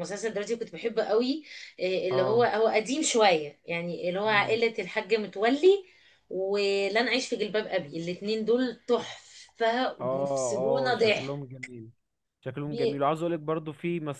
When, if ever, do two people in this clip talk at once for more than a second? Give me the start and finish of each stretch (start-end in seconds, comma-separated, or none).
10.0-11.4